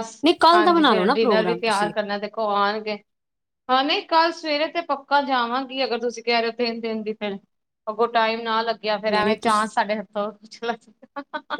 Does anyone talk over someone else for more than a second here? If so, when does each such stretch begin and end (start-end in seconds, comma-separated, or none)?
0.5-1.9